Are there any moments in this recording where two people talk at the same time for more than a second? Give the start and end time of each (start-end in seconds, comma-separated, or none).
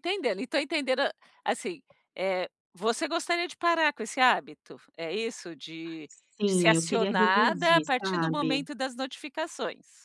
6.5-8.7